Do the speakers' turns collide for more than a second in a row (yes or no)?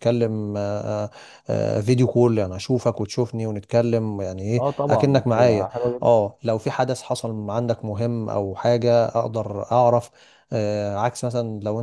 yes